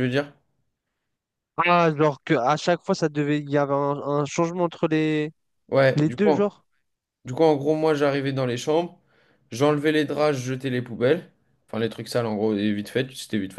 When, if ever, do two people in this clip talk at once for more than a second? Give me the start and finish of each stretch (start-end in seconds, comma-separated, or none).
none